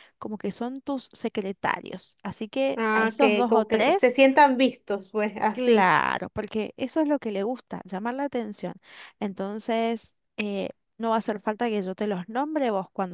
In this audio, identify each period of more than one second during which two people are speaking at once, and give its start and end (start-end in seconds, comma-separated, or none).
2.7-4.1